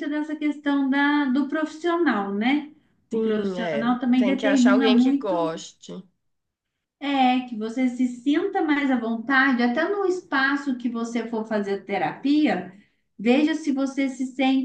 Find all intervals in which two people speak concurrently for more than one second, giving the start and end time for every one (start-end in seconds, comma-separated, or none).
3.1-5.6